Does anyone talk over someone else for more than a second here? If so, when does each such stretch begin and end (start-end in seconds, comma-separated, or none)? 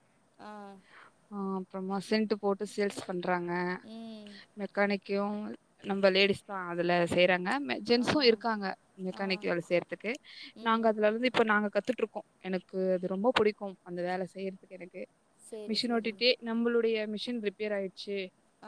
none